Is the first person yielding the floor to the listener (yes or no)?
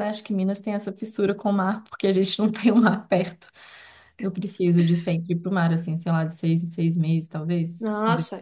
yes